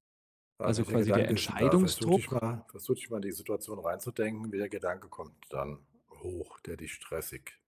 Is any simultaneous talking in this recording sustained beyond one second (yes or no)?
yes